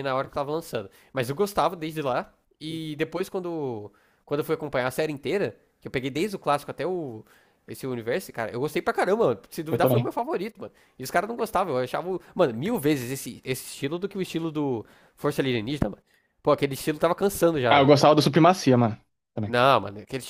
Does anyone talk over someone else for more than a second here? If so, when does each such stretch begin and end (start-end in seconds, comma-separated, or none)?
none